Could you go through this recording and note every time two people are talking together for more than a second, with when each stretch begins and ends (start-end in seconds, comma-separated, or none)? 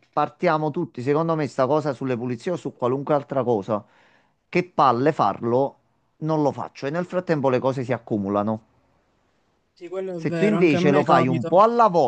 10.2-11.5